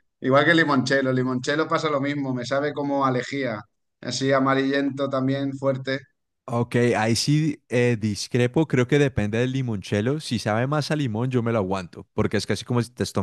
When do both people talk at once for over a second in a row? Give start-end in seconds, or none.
none